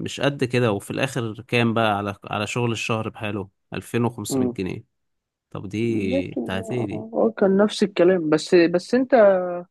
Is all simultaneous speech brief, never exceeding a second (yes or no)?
yes